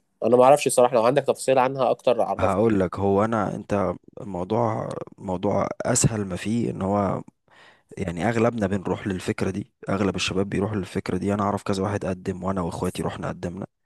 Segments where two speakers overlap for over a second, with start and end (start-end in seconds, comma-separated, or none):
none